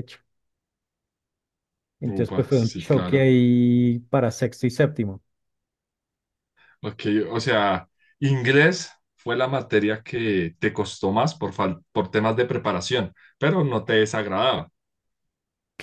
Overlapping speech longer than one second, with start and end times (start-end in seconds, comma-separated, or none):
2.1-3.3